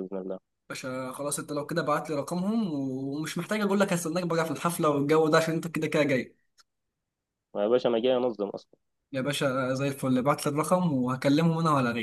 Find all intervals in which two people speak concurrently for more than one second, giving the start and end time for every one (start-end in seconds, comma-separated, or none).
none